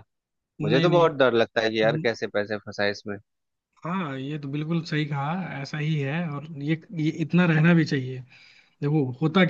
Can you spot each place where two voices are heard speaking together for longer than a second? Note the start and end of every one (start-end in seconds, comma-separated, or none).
none